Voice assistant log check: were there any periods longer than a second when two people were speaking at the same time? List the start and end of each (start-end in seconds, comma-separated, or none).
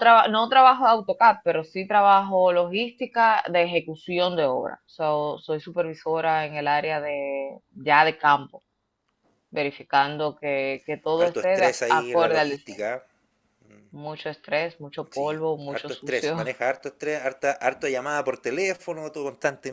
11.1-12.9, 15.1-16.4